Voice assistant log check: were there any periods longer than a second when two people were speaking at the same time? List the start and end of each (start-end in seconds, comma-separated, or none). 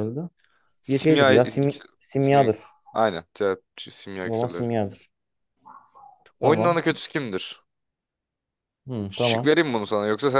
0.9-2.5